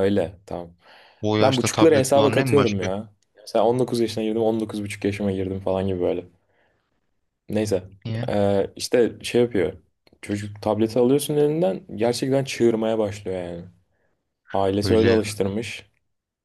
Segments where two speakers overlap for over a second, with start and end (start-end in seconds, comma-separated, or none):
1.4-2.9